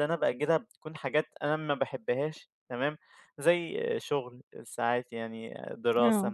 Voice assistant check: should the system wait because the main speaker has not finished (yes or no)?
yes